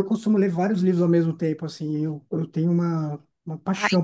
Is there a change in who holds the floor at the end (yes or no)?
no